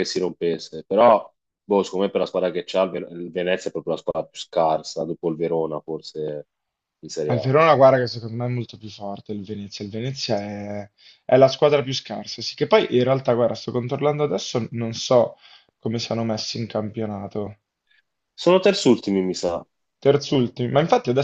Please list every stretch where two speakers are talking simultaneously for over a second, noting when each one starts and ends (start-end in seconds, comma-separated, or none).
none